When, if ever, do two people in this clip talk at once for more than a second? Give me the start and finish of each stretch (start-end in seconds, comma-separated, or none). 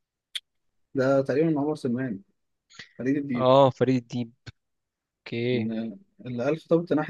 none